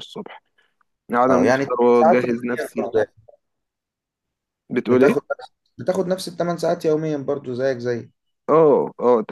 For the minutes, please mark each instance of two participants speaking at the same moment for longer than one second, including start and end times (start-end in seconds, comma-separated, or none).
1.3-2.9